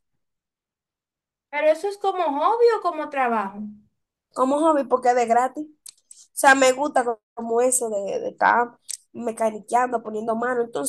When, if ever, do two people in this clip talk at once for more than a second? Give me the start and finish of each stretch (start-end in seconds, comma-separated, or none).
none